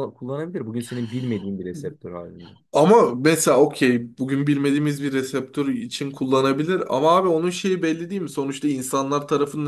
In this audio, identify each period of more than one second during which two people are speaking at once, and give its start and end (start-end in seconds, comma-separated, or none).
none